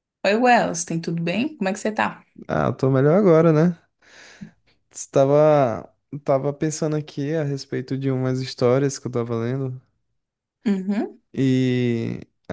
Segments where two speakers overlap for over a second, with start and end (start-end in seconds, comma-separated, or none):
none